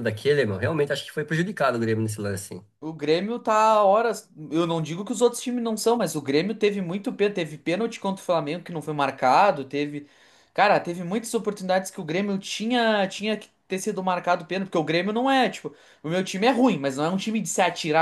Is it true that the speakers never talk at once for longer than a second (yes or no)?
yes